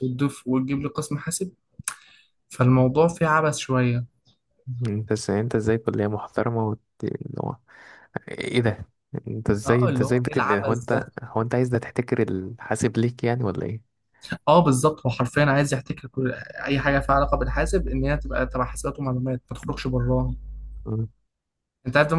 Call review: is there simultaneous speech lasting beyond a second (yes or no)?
yes